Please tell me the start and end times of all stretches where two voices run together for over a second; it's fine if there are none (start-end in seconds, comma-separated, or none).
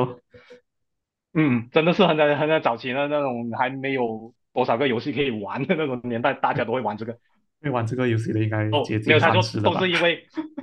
8.7-9.9